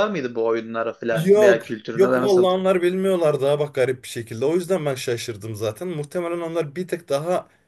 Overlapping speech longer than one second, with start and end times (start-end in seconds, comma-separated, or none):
1.1-2.5